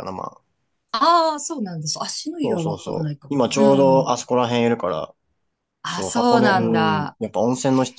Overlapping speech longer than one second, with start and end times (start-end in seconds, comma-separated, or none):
2.4-4.1, 5.9-7.2